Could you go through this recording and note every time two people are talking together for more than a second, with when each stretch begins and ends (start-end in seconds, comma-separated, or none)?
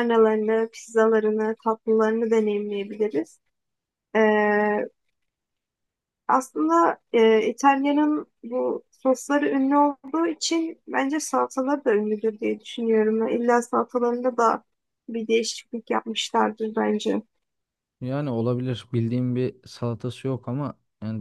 none